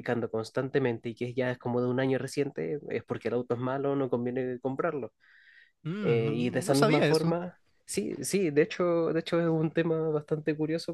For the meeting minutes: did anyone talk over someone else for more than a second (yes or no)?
yes